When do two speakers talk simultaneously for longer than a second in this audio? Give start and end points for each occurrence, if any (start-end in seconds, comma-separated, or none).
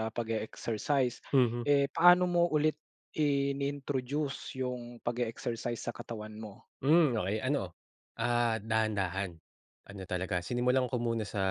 none